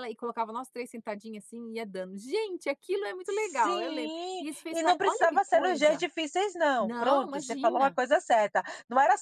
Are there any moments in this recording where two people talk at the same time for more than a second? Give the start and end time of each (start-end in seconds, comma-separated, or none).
3.3-6.0, 6.8-8.0